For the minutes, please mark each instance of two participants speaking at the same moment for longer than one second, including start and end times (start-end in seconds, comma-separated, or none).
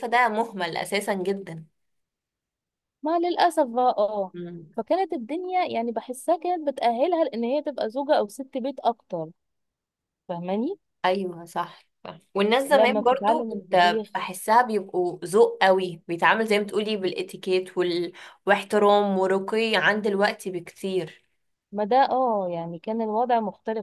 12.7-14.1